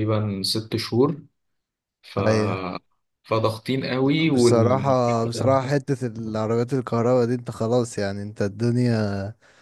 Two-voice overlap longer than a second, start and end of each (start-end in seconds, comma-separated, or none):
none